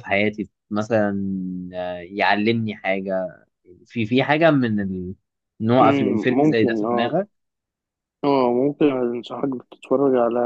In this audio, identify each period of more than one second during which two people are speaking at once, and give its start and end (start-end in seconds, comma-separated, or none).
5.8-7.1